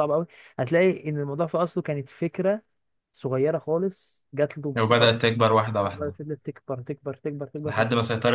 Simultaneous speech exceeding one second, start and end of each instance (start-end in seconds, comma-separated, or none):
none